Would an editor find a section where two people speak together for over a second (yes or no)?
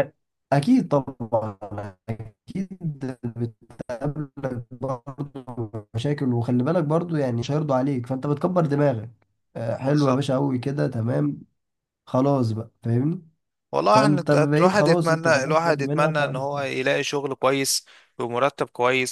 yes